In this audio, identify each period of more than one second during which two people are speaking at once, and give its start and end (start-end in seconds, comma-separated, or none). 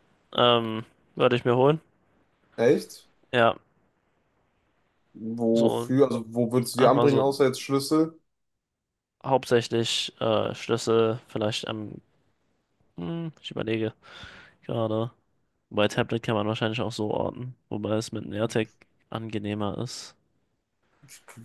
none